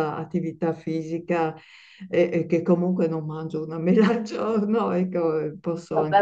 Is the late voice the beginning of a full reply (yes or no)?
yes